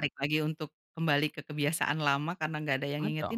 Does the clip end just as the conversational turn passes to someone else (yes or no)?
yes